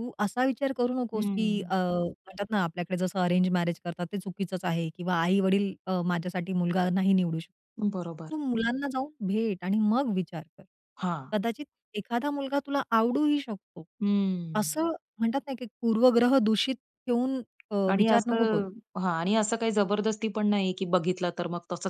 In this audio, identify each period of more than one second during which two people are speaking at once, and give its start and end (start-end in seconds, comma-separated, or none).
none